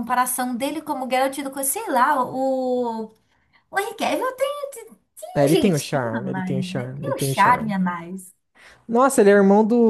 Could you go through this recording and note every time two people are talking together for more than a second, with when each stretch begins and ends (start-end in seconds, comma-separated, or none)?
5.3-7.8